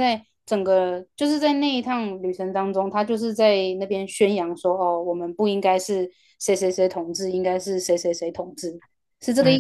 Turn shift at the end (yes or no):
yes